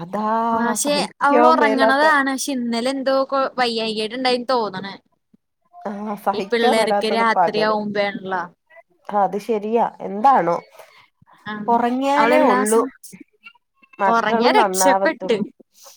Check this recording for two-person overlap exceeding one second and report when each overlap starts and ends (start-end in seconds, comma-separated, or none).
14.1-15.4